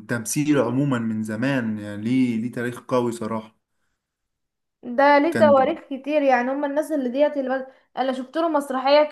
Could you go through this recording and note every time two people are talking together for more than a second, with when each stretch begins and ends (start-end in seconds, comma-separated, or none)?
none